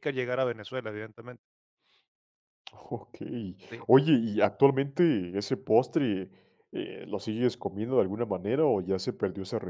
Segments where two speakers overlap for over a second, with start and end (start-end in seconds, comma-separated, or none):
none